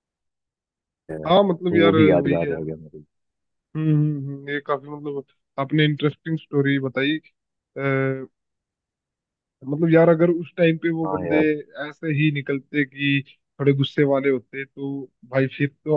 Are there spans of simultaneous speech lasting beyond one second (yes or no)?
yes